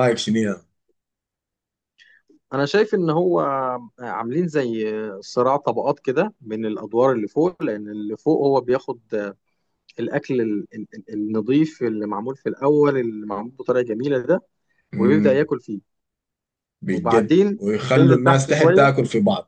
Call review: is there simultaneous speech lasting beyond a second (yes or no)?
yes